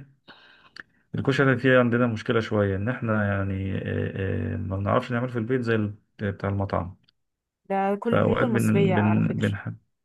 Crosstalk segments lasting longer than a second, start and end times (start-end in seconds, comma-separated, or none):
8.1-9.5